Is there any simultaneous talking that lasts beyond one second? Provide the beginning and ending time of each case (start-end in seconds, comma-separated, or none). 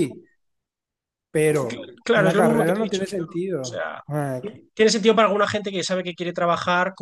1.7-4.0